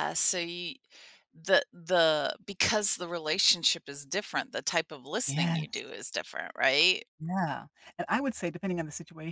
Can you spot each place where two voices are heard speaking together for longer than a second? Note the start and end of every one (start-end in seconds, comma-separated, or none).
none